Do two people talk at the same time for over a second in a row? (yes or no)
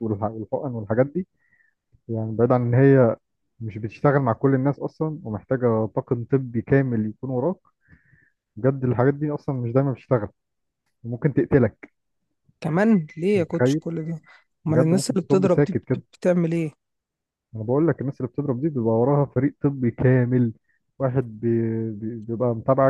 yes